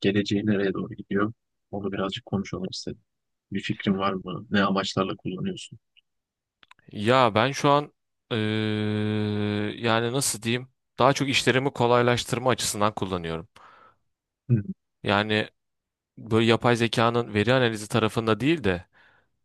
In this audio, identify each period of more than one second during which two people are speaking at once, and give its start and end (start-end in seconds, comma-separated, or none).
none